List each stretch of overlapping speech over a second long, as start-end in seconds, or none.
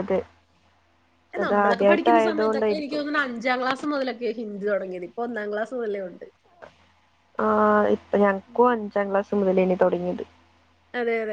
1.4-3.0